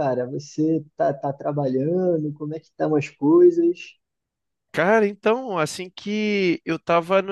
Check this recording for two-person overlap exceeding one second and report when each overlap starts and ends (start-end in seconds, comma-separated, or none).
none